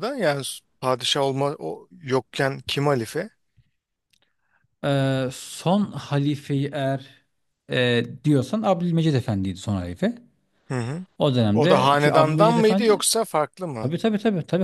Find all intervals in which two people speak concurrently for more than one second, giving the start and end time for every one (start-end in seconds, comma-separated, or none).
11.5-13.1